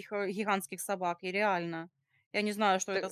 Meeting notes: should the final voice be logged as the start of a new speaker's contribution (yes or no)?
no